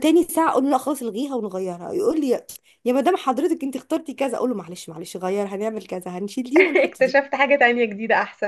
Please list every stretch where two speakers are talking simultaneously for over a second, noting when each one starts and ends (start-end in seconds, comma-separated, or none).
none